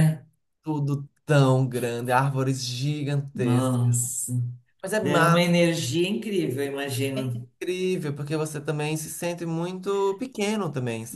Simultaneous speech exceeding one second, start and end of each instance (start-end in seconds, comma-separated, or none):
none